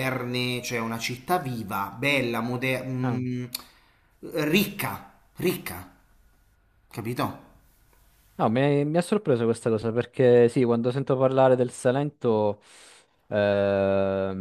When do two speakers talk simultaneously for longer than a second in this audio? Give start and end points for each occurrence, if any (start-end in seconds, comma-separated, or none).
none